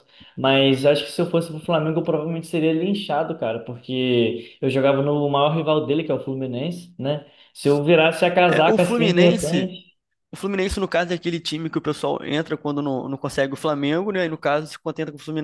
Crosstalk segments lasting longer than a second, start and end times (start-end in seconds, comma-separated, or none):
8.5-9.7